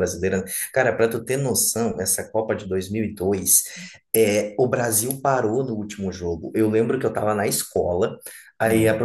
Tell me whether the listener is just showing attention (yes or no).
yes